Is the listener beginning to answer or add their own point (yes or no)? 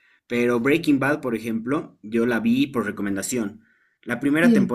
no